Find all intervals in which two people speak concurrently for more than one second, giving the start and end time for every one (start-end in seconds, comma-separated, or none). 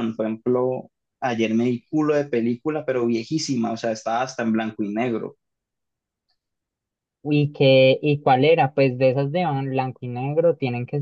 none